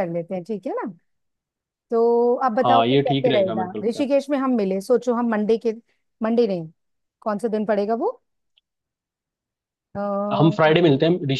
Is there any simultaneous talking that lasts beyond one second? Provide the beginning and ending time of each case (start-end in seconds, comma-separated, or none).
2.6-4.1